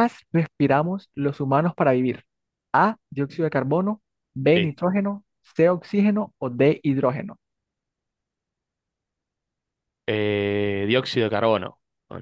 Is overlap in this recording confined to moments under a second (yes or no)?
yes